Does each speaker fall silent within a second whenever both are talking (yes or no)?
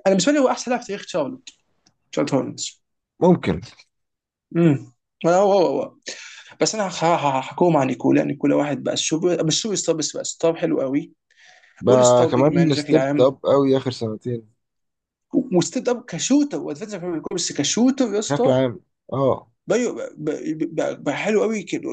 no